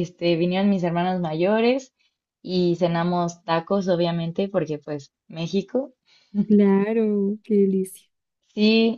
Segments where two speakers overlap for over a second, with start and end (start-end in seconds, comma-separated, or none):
none